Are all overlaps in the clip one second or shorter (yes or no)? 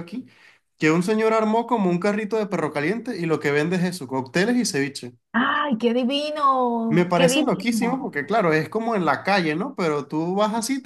no